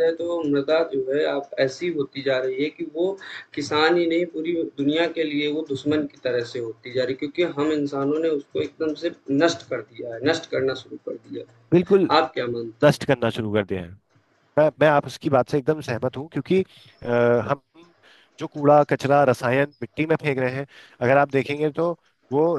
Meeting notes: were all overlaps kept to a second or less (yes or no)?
yes